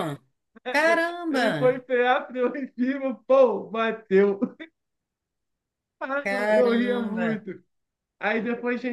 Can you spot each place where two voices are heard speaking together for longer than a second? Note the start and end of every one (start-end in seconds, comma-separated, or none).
6.1-7.5